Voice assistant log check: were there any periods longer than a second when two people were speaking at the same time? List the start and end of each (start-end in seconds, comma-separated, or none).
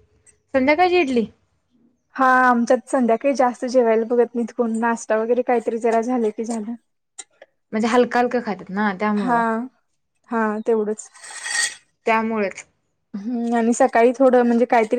none